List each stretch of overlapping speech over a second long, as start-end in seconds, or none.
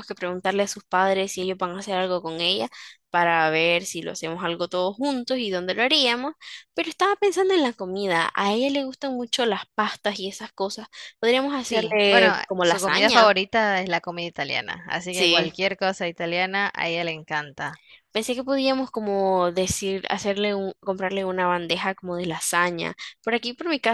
11.6-13.3